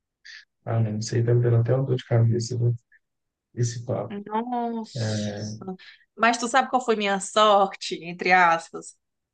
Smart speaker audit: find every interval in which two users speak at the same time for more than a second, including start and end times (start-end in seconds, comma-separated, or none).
none